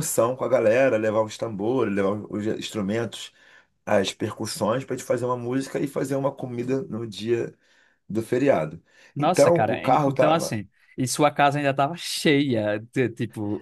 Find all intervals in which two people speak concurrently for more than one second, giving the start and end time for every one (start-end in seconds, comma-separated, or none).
9.2-10.6